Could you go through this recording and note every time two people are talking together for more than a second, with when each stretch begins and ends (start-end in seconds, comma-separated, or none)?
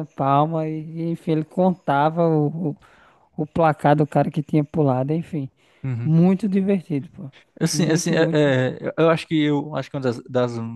none